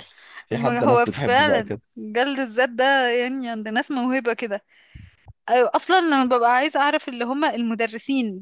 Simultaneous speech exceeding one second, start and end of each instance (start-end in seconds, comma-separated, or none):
0.5-1.8